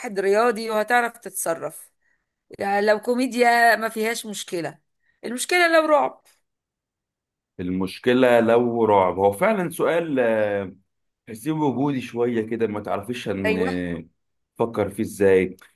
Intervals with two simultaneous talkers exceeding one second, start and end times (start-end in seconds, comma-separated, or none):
none